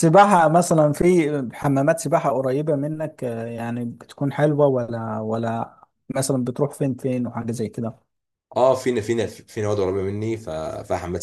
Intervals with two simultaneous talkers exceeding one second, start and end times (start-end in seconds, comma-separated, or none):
none